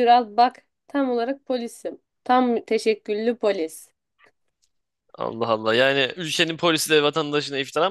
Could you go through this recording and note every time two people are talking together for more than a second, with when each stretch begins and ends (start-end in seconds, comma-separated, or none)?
none